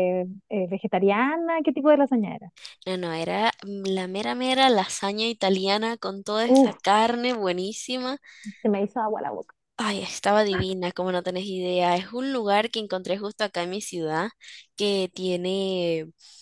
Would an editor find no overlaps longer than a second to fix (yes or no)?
yes